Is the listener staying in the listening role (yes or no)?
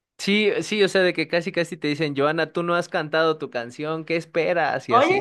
no